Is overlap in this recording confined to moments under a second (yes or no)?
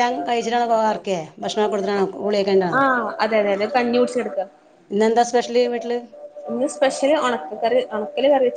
yes